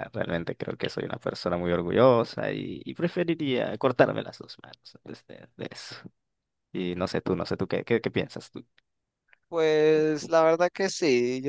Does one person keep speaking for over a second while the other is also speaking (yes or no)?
no